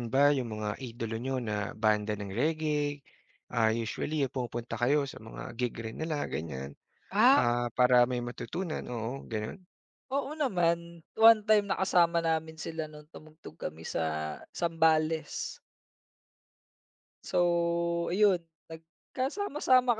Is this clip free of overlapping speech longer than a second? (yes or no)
yes